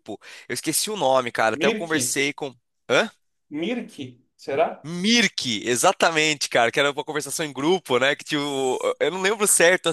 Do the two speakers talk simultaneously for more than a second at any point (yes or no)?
no